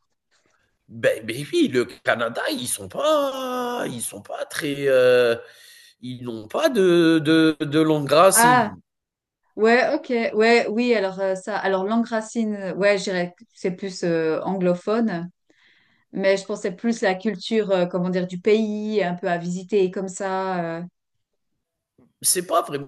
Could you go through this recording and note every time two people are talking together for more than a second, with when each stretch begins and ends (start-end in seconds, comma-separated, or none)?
none